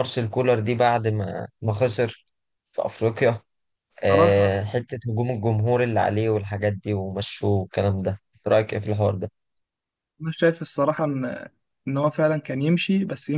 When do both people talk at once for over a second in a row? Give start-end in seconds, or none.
none